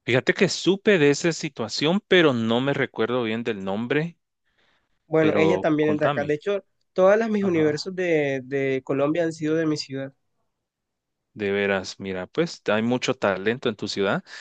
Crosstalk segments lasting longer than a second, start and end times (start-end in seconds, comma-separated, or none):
5.2-6.4